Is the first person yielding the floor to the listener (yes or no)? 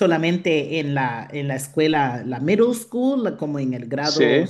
no